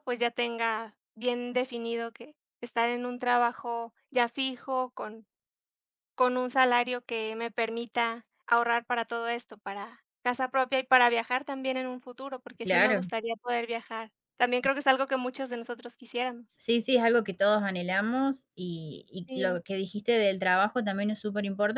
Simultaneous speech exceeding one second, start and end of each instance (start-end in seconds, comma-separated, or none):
none